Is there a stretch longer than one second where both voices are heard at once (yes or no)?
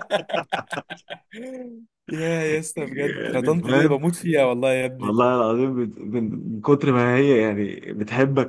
yes